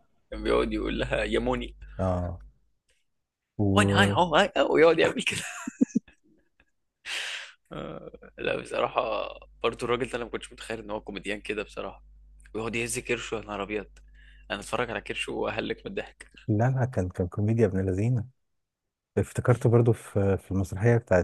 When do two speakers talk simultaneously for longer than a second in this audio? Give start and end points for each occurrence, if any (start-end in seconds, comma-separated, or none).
none